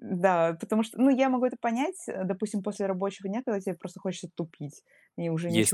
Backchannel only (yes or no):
no